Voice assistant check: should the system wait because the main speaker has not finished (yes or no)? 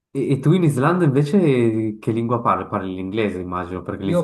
no